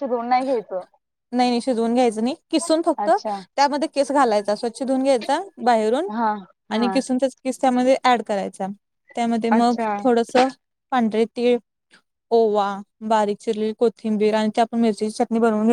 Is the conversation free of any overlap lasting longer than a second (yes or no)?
yes